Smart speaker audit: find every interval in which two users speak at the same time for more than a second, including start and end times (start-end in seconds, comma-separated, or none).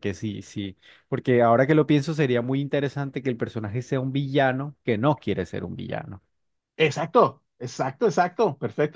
none